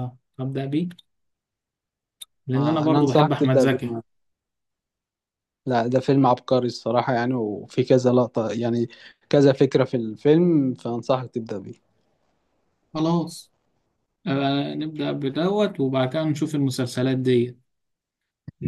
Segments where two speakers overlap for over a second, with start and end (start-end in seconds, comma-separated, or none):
2.5-3.9